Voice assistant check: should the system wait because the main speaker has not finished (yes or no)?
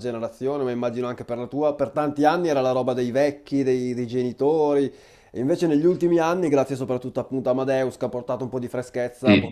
yes